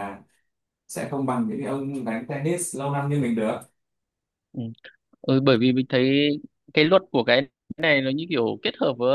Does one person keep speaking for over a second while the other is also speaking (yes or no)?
no